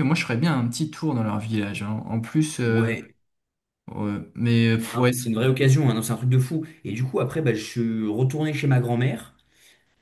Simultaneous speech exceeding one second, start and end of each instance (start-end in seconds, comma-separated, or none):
none